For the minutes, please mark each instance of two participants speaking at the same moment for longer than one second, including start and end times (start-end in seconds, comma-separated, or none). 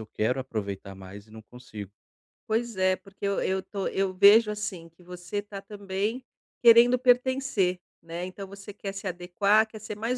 none